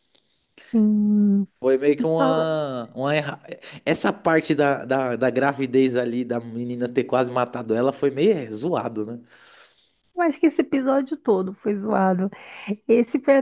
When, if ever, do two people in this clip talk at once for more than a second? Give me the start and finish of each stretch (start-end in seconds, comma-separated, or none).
none